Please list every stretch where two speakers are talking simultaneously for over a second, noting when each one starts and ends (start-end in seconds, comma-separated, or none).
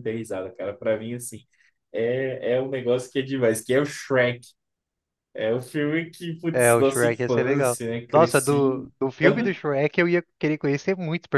6.5-8.9